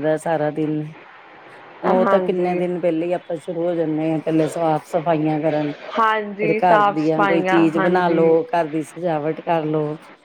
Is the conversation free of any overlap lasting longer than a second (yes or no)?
no